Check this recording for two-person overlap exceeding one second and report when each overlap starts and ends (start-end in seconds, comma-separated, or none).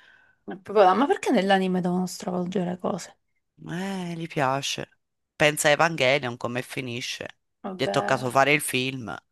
none